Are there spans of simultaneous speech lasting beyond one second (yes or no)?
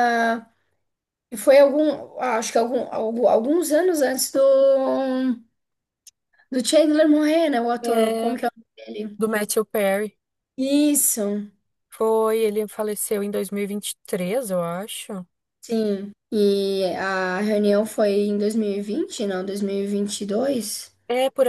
no